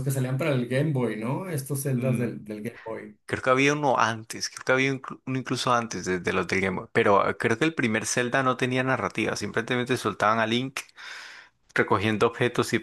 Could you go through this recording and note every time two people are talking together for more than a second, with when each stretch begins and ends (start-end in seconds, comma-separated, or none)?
none